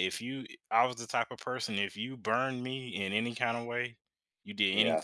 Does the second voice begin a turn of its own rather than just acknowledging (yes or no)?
no